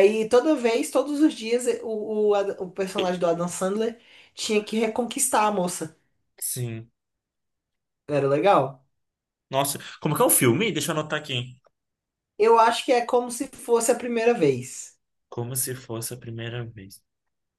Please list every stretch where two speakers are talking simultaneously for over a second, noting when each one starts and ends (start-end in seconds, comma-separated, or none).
none